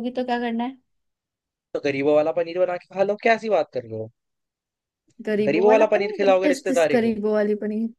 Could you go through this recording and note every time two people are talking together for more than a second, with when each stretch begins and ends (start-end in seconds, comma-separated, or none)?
5.5-7.1